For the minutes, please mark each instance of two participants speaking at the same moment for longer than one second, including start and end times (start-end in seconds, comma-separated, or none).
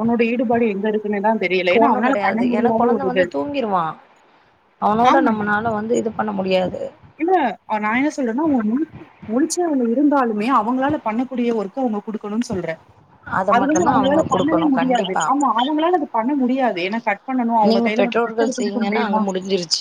13.6-15.2, 17.7-19.2